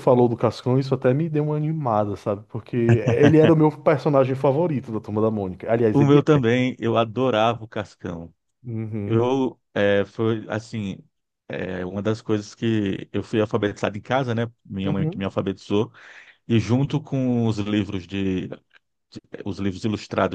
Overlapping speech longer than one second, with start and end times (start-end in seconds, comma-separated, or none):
none